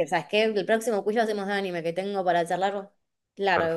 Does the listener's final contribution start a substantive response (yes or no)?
yes